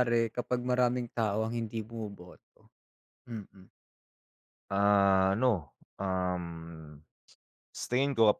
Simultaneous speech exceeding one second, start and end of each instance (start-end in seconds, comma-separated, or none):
none